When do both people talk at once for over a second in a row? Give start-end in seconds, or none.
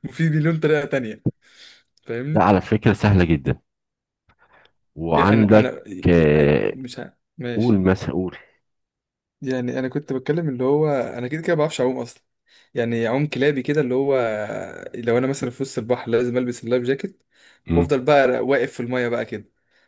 none